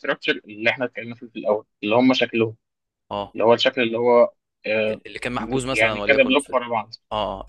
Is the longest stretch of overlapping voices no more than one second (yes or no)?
no